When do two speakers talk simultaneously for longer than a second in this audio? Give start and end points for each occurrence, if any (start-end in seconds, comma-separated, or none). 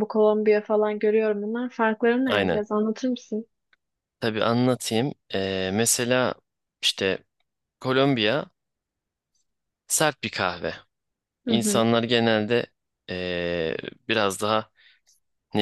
none